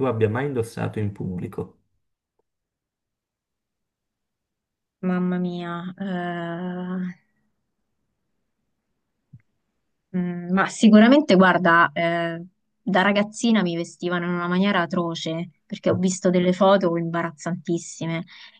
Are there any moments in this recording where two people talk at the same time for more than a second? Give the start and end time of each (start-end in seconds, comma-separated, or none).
none